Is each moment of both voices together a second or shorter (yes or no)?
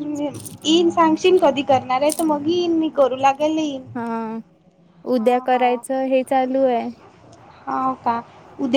yes